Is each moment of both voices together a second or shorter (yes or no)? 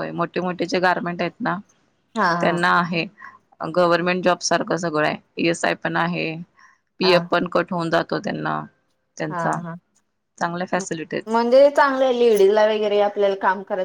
yes